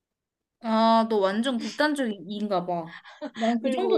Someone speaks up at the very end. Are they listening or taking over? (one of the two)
taking over